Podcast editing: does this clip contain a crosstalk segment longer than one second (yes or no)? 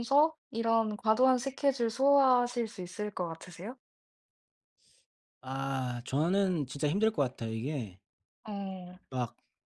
no